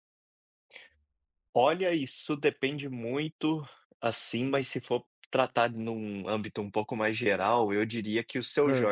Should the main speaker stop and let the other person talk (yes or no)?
no